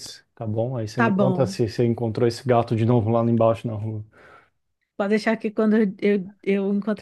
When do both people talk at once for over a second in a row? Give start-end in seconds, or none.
none